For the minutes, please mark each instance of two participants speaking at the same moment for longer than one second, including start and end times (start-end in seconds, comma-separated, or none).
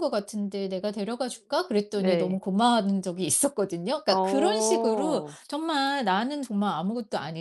4.1-5.4